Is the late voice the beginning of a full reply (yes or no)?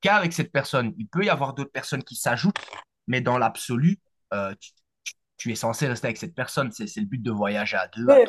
yes